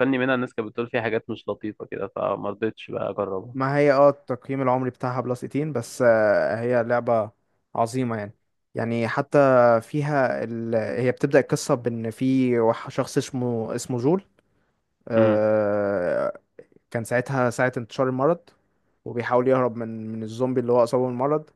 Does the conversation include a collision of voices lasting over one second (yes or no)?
no